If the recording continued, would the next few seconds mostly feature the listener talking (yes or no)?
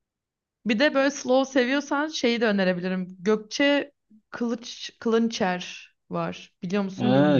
yes